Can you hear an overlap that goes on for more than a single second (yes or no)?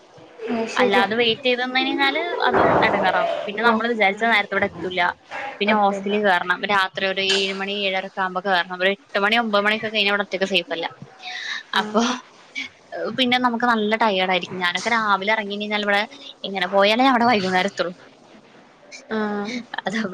no